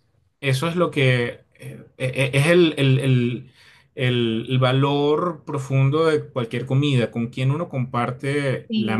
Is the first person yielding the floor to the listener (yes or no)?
yes